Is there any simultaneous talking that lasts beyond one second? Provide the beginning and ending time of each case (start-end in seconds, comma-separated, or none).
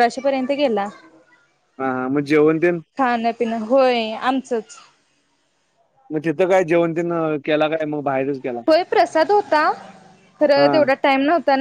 none